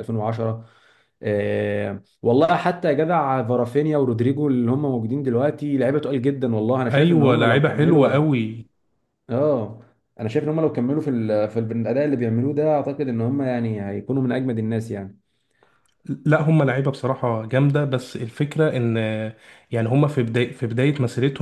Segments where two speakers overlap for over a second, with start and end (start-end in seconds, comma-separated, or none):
6.9-8.3